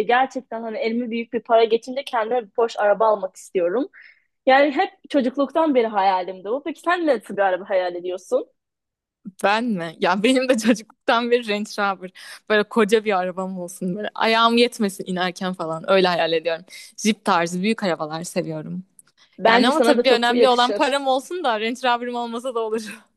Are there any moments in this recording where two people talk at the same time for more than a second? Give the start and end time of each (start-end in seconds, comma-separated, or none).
19.5-20.9